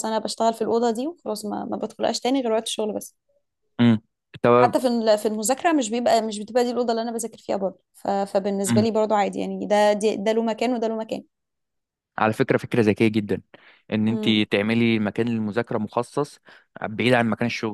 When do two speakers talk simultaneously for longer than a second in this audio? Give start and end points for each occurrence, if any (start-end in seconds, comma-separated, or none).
none